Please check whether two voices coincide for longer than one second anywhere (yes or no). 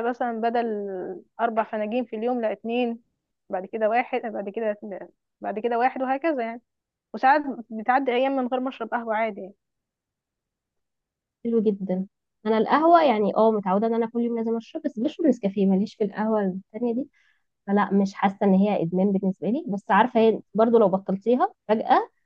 no